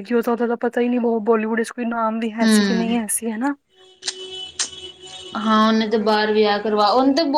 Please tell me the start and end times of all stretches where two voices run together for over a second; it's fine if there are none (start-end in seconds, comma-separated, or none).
none